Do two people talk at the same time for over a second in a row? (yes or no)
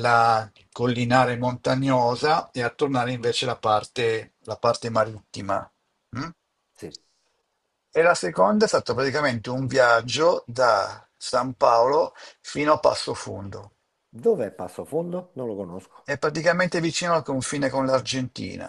no